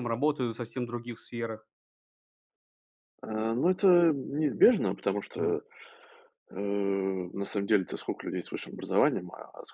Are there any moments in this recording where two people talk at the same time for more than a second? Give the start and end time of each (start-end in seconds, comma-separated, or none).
none